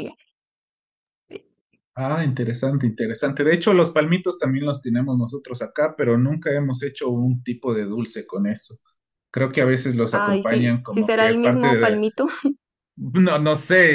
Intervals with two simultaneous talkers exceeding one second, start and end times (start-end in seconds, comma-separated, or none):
10.1-12.0